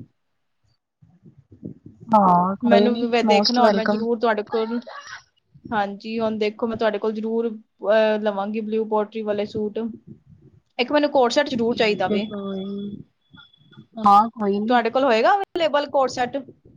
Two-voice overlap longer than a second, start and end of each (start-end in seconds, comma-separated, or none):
2.7-4.0